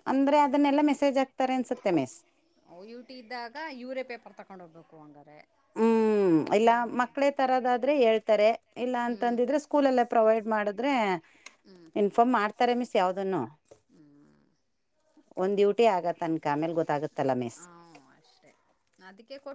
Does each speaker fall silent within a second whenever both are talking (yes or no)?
yes